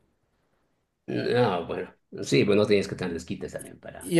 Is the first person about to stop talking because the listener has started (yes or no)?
yes